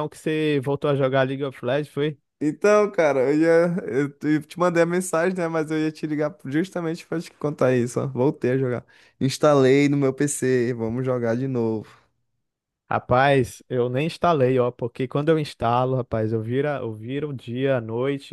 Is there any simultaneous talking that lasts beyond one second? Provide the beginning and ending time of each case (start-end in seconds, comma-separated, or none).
none